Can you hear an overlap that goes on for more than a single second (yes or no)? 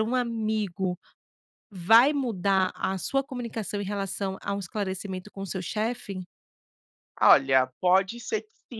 no